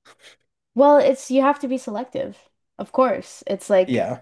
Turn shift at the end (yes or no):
no